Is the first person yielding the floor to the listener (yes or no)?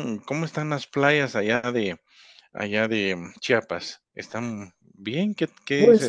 yes